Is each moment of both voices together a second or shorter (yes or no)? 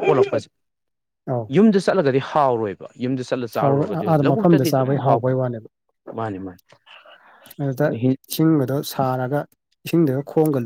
no